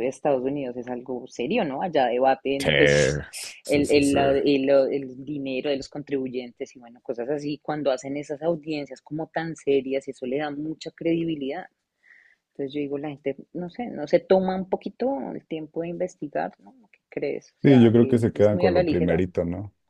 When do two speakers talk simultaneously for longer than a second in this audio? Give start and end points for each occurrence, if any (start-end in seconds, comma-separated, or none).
17.6-19.2